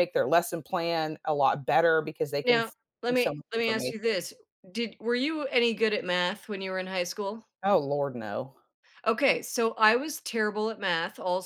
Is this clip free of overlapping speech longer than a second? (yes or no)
no